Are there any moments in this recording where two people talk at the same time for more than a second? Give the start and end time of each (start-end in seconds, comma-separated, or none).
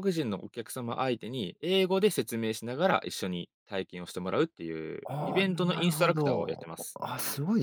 5.1-7.0